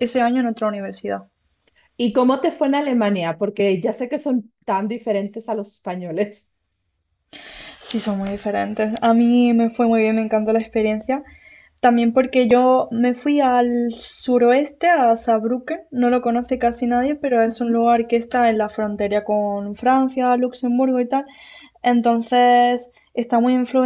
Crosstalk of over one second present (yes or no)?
no